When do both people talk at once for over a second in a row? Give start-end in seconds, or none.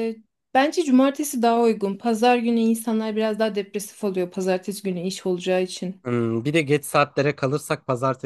none